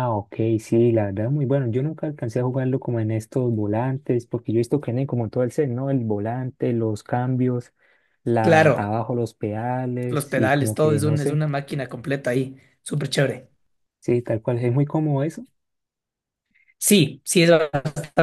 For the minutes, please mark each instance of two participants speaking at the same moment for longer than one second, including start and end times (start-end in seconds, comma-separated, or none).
10.1-11.4